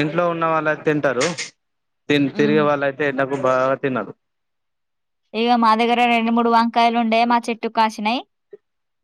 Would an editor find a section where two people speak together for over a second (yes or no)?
no